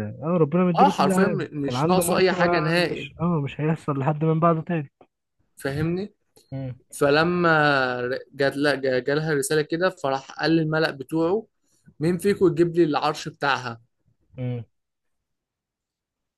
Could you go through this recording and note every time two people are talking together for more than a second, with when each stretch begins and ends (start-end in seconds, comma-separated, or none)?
0.8-3.1